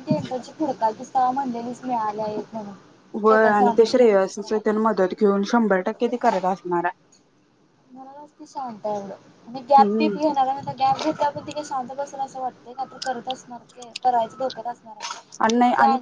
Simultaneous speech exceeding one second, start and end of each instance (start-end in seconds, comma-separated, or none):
none